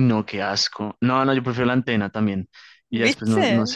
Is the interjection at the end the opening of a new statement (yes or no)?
no